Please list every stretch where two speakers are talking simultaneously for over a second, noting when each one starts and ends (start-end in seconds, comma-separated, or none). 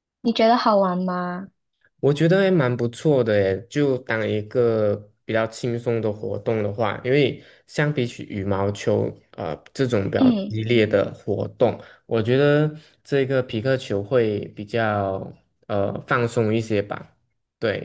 none